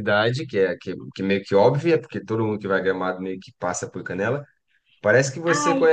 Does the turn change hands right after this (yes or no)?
no